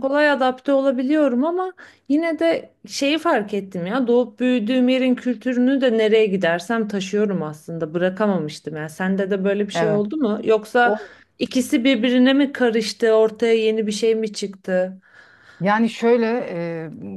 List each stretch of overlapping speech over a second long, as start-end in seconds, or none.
none